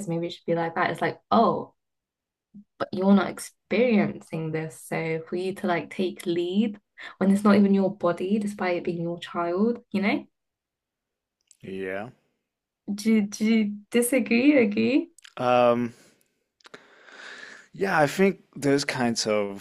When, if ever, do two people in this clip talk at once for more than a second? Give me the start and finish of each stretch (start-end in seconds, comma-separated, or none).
none